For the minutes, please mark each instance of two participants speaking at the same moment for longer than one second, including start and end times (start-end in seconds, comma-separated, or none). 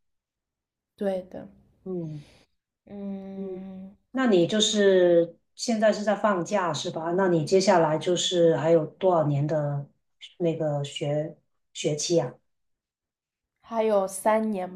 none